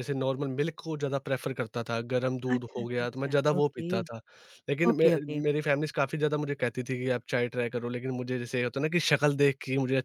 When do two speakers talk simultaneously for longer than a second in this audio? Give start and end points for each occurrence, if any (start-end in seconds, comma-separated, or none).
2.5-3.9